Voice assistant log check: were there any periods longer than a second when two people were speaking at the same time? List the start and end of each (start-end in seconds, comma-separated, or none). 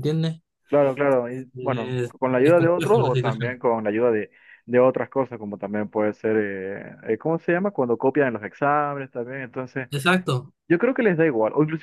1.6-3.6